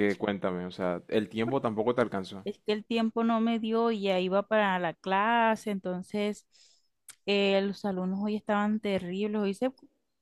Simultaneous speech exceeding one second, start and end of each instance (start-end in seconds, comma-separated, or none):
none